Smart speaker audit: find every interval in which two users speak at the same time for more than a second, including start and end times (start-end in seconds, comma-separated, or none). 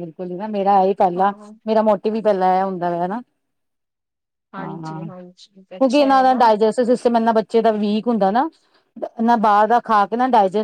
4.6-6.4